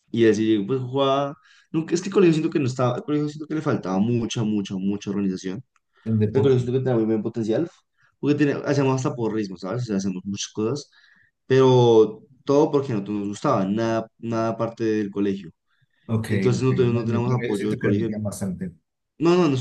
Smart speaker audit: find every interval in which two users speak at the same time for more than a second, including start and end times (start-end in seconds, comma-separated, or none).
16.3-18.1